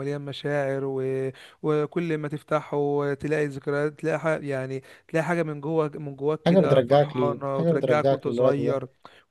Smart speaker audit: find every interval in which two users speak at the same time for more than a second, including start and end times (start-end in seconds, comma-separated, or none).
6.5-8.8